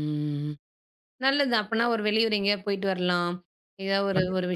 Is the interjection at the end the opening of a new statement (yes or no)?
no